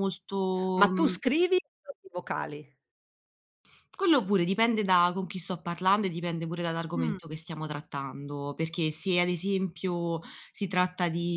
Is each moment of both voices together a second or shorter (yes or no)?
yes